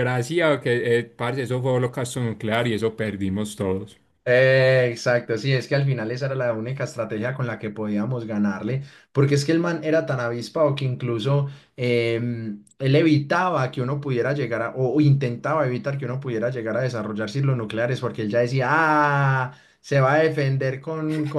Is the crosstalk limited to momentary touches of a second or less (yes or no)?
yes